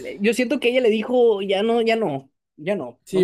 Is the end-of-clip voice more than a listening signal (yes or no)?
yes